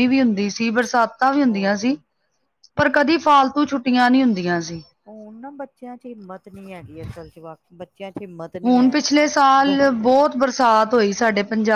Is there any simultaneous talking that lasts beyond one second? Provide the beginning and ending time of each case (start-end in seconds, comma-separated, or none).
none